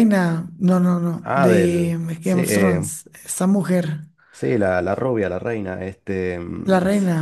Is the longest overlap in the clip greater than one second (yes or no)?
yes